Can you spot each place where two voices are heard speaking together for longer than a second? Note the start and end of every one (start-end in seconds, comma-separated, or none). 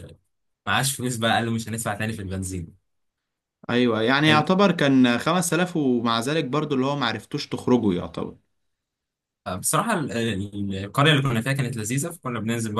none